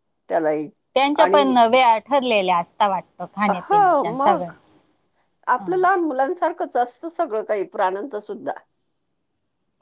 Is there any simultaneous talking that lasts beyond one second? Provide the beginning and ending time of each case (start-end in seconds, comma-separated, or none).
none